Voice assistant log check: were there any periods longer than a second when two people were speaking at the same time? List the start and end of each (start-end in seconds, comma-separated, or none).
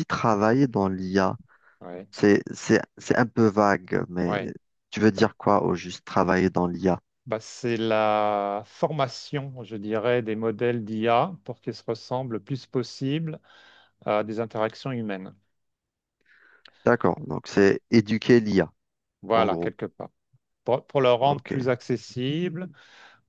none